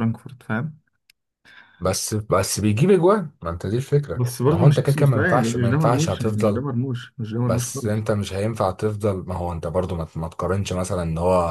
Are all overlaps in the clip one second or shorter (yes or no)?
no